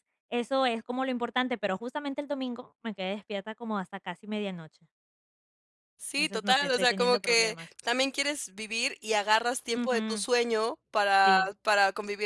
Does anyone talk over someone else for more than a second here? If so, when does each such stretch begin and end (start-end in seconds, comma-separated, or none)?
6.1-7.7